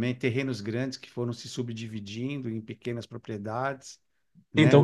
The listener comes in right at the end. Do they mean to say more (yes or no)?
yes